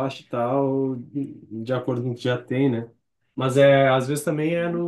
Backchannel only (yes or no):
yes